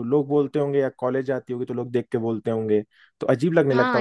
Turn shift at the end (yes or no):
no